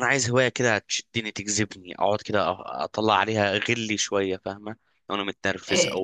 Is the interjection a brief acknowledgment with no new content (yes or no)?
no